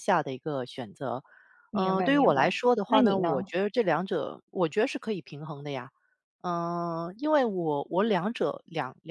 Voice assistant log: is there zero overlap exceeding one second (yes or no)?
no